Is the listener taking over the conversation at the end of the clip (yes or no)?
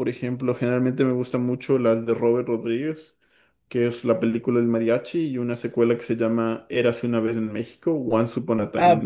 yes